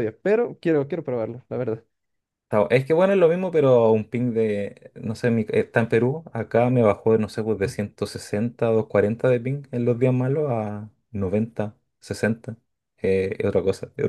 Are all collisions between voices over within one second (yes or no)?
yes